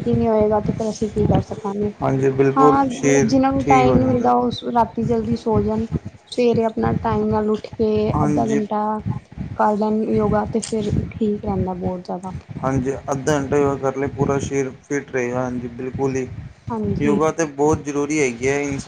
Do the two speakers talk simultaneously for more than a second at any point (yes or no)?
yes